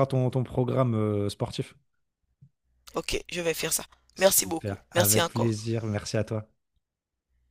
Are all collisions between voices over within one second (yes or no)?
no